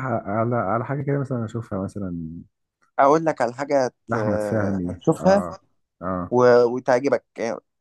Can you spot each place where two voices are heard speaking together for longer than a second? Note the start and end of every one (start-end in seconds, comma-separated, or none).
4.1-5.4